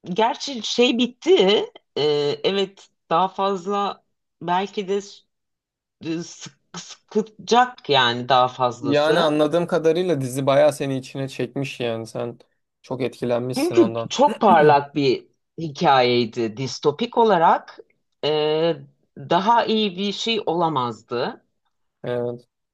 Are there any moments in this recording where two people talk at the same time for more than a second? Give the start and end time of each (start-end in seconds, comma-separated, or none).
none